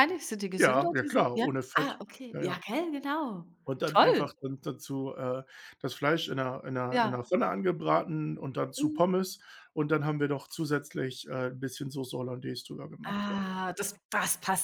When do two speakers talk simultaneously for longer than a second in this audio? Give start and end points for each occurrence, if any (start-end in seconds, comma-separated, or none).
0.6-2.6